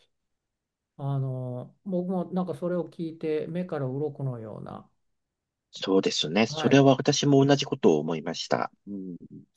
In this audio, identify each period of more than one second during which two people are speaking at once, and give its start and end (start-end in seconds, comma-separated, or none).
none